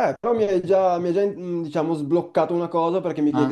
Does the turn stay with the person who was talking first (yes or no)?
yes